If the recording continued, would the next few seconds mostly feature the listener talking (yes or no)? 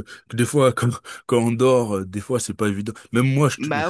no